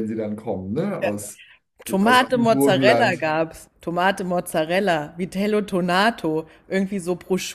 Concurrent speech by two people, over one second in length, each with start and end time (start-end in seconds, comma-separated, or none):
2.0-3.3